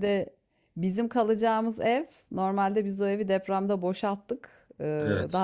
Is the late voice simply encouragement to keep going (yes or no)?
yes